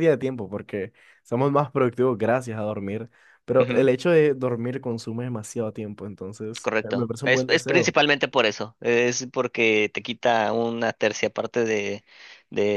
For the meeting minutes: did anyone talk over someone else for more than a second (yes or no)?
yes